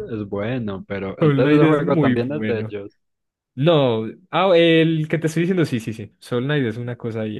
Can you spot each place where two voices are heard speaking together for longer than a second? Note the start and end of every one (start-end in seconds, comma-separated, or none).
1.2-2.7